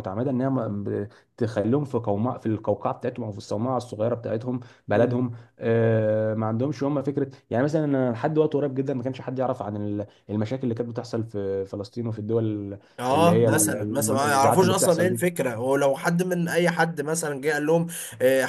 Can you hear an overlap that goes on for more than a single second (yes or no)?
yes